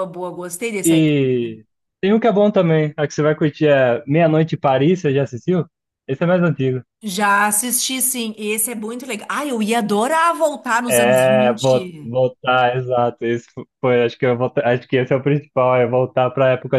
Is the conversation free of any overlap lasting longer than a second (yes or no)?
no